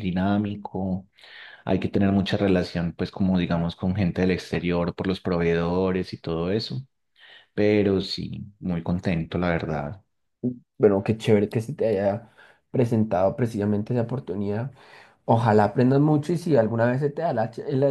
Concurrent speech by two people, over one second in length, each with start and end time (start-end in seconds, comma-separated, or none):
none